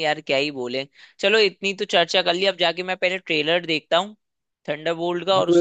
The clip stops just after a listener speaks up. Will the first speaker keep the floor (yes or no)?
no